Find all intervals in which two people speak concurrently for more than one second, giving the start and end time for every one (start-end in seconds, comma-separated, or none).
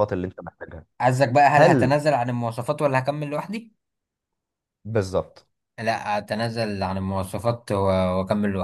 none